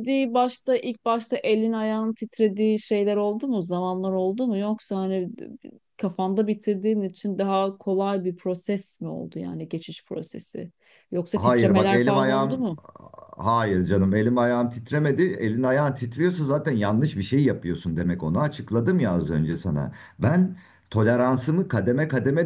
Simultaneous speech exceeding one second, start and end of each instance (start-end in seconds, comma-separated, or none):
11.3-12.6